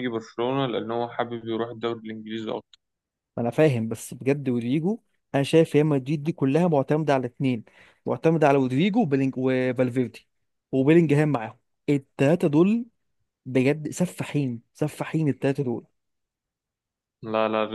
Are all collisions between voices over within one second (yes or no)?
yes